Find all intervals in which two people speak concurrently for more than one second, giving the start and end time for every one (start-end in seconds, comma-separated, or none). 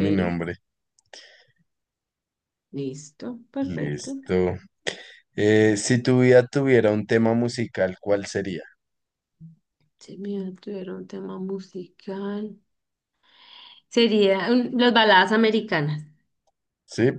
none